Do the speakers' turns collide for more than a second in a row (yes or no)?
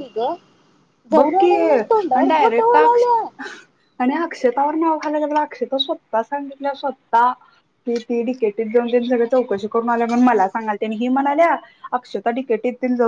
yes